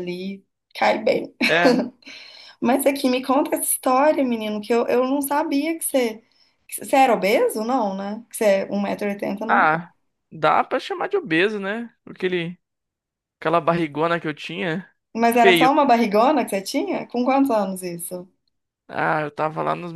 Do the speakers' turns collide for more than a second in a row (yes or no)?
no